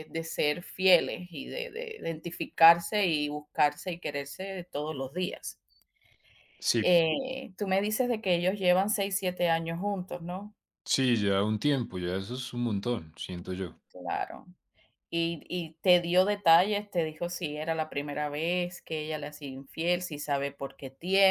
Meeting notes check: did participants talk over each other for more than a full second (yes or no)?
no